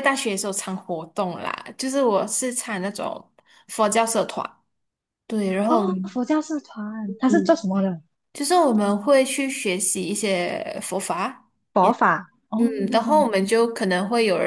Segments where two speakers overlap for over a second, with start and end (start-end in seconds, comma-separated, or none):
none